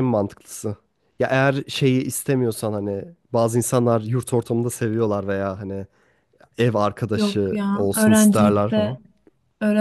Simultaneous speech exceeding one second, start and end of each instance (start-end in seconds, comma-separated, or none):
7.2-9.0